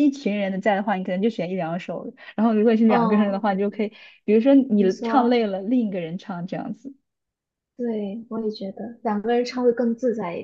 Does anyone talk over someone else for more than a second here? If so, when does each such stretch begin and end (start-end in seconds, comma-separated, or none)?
none